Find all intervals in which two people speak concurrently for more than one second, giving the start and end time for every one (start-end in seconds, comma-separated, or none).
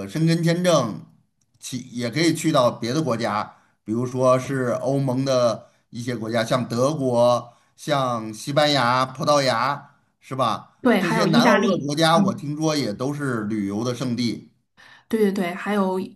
10.8-12.4